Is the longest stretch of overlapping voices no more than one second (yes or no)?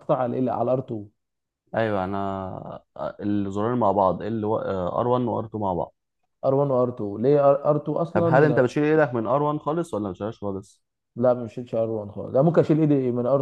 yes